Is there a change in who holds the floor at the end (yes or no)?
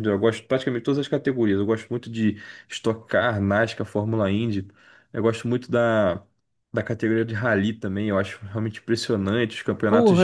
yes